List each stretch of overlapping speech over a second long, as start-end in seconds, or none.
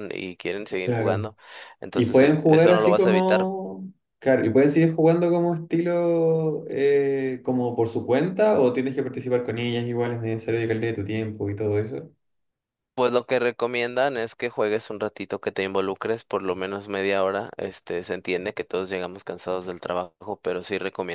1.9-3.5